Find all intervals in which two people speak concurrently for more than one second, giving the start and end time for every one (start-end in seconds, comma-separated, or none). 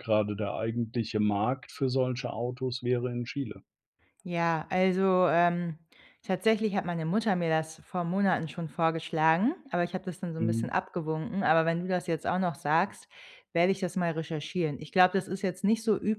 none